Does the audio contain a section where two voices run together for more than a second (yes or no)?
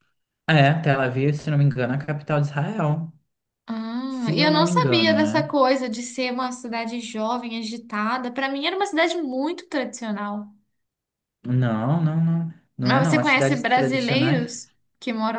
yes